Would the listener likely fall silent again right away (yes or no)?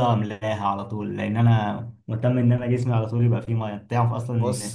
yes